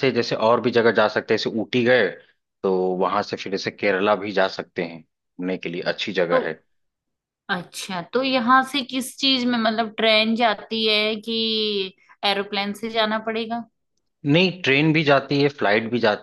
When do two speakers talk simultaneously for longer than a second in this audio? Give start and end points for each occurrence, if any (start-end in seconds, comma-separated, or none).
none